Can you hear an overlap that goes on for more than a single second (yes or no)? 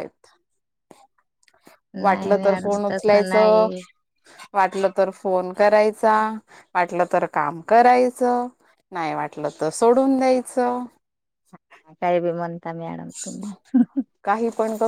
yes